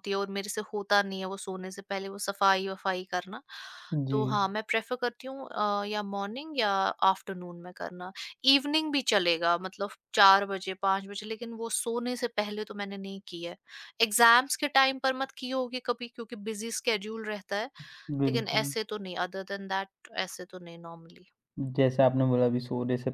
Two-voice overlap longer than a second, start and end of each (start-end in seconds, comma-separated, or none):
none